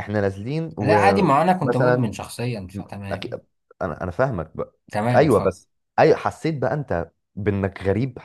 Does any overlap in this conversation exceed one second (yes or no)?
yes